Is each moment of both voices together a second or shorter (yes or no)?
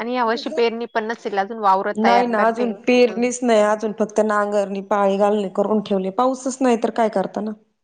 yes